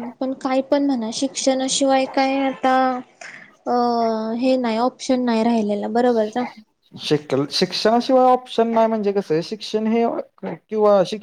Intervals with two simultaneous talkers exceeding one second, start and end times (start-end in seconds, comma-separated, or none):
none